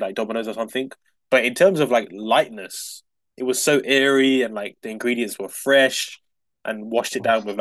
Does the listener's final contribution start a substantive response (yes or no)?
no